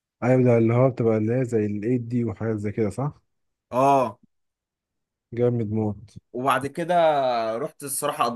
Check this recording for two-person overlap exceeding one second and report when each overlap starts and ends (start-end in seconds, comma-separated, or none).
none